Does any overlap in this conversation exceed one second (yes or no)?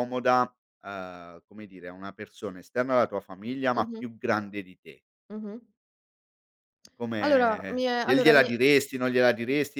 yes